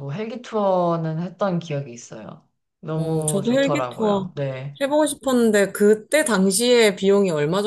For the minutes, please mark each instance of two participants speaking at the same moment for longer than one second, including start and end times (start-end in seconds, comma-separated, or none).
3.0-4.3